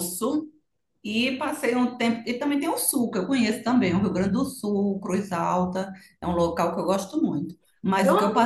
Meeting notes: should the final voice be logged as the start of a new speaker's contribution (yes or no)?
no